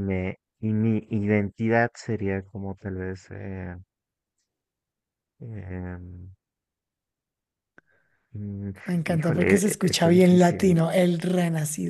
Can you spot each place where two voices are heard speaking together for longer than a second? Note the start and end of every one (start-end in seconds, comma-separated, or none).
9.1-10.8